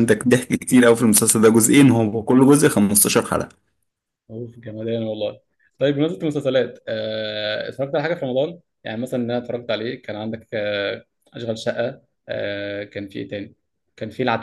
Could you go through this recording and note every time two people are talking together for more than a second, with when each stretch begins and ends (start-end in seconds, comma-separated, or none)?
none